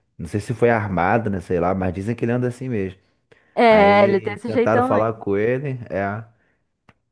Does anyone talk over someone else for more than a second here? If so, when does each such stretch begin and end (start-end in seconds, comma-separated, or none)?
3.7-5.1